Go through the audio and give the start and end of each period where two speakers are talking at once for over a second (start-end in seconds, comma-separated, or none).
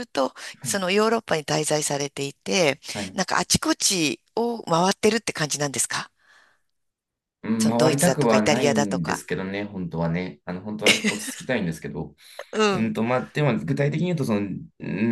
7.6-9.2